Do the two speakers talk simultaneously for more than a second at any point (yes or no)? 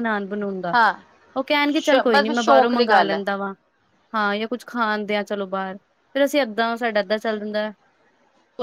yes